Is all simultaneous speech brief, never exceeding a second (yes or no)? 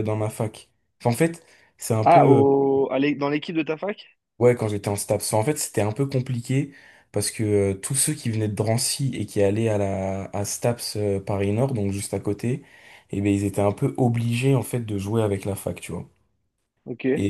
yes